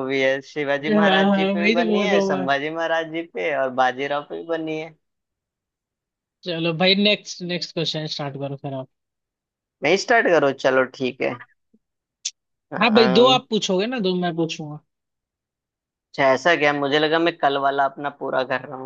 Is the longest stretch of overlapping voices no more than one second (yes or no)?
no